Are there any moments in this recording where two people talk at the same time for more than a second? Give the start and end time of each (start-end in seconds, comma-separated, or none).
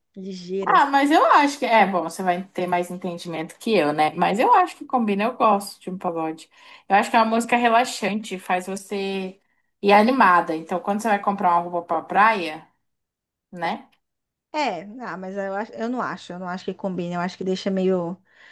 none